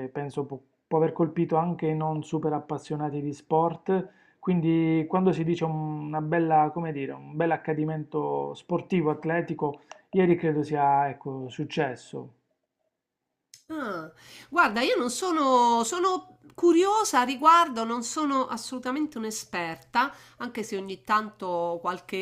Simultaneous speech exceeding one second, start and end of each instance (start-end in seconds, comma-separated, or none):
none